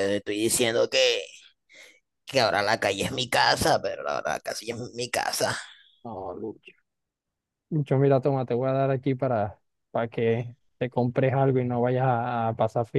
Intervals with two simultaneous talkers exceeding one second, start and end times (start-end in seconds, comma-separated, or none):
none